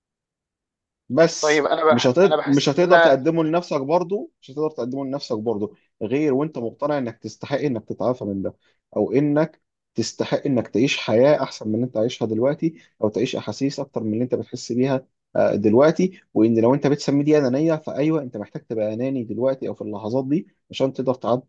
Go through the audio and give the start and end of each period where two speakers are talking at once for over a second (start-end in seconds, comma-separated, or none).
1.4-3.1